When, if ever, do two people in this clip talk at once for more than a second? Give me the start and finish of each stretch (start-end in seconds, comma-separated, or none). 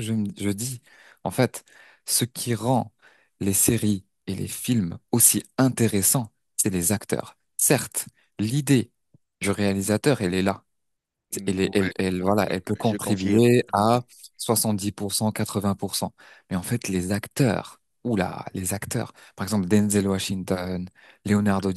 11.4-14.0